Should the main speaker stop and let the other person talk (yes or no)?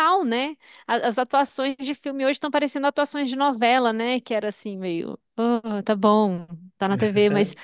no